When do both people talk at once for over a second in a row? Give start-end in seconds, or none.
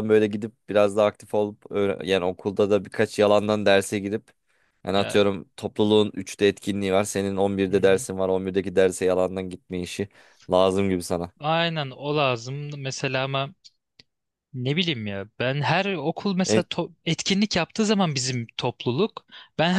none